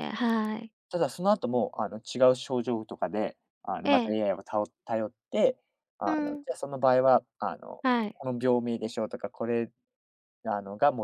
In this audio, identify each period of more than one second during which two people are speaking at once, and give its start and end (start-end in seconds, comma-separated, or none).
none